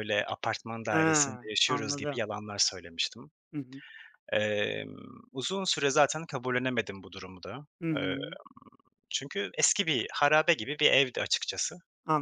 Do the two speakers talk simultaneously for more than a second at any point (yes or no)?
yes